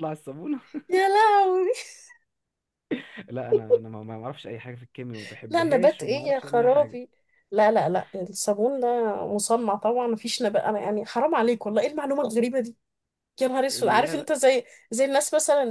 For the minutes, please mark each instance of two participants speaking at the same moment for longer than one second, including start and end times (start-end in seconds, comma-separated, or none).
5.5-7.0